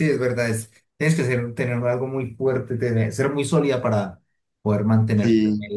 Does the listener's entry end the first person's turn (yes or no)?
yes